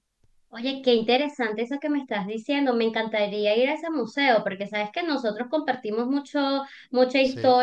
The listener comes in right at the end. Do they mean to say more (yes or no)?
no